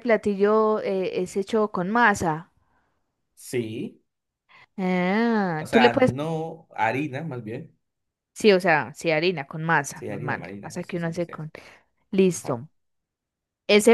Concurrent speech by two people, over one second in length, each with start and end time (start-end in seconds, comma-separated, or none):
9.9-11.3